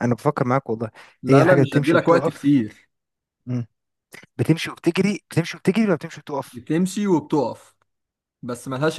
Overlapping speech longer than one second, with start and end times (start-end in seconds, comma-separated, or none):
1.3-2.5